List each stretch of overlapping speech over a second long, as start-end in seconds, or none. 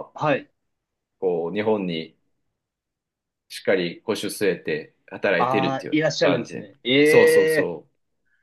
5.4-7.7